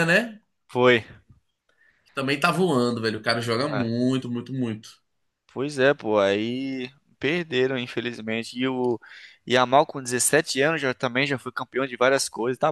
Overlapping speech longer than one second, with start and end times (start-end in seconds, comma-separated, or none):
none